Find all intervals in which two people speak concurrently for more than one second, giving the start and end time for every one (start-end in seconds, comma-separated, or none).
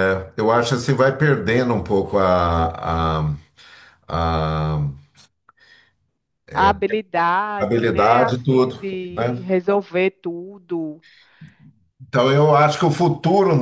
7.6-9.5